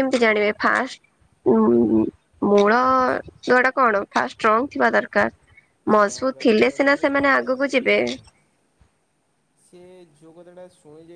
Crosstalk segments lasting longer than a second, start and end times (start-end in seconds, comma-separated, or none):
5.9-8.0